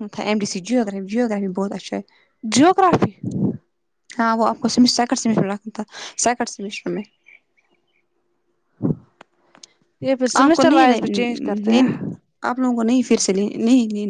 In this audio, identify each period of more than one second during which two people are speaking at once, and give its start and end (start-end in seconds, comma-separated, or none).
10.4-11.9